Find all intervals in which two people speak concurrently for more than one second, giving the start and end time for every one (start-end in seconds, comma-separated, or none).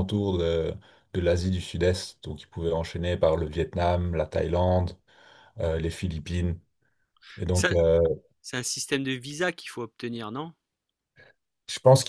none